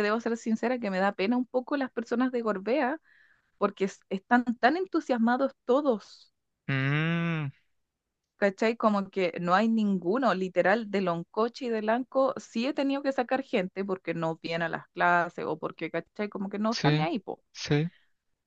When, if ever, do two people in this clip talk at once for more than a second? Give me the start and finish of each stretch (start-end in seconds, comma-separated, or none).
none